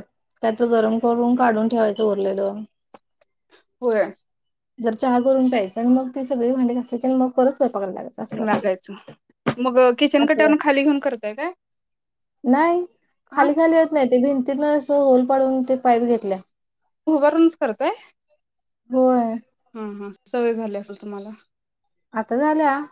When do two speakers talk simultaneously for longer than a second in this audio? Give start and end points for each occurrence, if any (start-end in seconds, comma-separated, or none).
none